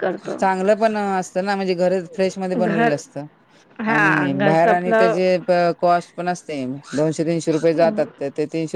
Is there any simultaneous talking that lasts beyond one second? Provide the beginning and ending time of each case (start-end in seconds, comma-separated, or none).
3.9-5.3